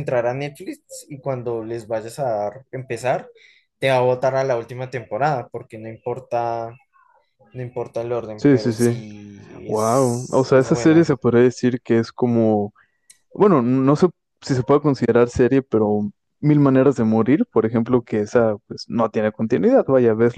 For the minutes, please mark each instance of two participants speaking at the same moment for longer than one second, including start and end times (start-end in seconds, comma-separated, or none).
9.7-11.1